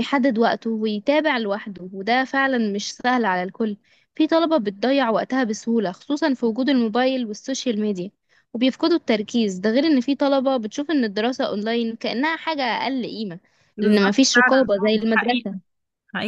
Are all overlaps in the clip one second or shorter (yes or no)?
no